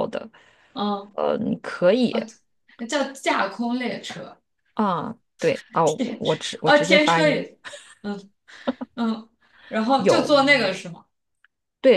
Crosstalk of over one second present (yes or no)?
yes